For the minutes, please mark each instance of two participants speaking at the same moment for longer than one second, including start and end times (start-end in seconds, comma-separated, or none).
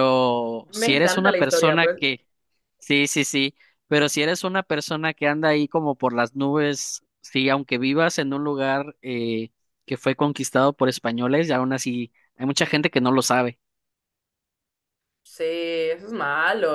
0.7-2.0